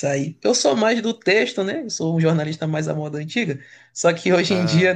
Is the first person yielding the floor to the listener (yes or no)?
no